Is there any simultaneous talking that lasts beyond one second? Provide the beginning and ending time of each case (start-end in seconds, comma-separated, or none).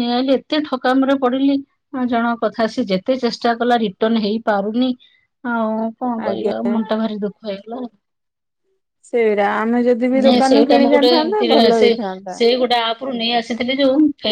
none